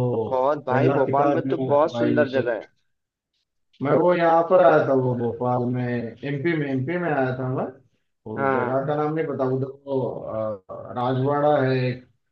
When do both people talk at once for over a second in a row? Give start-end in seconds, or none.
0.7-2.5